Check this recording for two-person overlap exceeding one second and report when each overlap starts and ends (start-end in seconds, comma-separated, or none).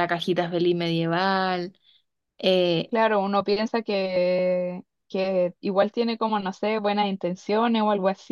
none